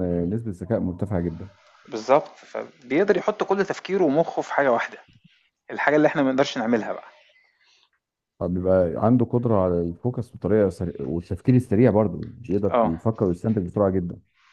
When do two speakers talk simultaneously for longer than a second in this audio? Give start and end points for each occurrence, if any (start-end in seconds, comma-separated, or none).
none